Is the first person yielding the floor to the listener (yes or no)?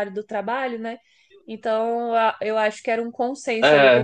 no